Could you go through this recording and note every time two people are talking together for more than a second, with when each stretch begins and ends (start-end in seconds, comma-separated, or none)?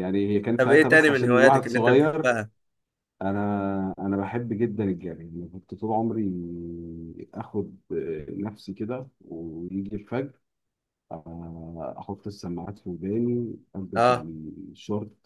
0.6-2.3